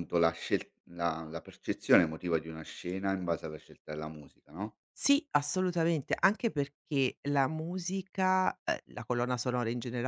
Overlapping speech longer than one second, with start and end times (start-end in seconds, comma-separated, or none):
none